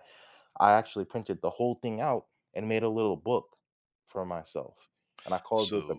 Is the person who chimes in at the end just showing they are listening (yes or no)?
no